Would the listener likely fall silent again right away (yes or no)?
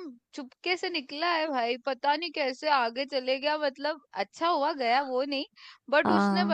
yes